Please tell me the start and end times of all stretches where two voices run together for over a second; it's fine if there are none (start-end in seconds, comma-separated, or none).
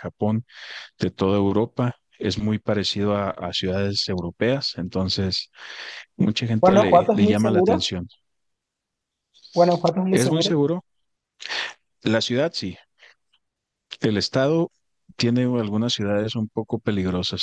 6.6-7.9